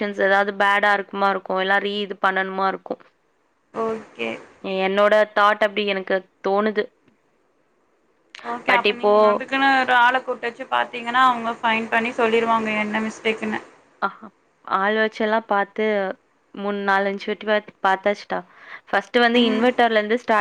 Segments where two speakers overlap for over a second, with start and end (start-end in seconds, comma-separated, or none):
none